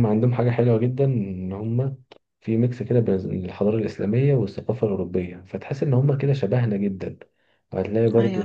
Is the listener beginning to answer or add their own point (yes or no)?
no